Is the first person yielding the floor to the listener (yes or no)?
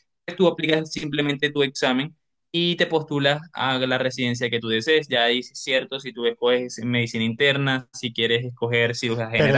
yes